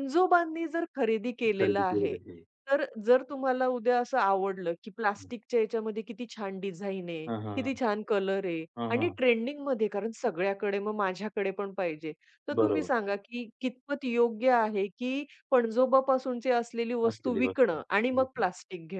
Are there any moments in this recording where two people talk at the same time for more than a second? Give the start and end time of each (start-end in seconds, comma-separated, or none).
17.1-18.5